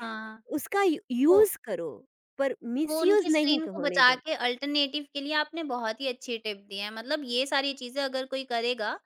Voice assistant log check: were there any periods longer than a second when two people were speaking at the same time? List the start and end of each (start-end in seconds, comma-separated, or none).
2.9-4.2